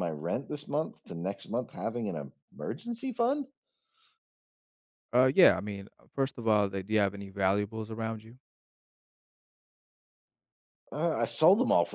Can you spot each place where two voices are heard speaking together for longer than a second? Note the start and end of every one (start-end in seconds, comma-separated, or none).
none